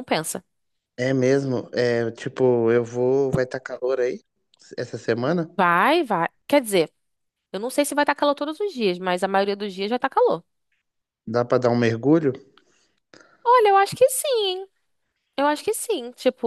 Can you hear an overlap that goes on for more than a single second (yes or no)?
no